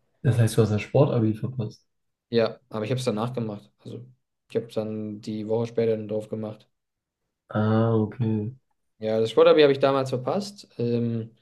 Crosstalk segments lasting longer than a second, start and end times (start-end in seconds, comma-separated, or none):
none